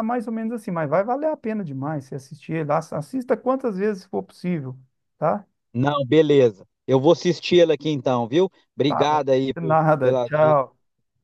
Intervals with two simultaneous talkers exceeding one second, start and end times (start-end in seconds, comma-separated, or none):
8.9-10.7